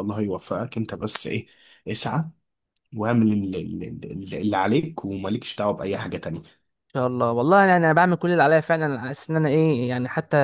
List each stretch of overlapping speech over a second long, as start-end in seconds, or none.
none